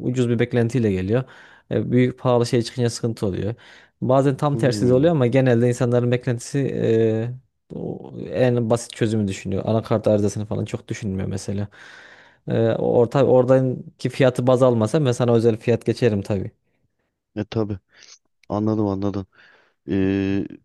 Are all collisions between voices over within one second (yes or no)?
yes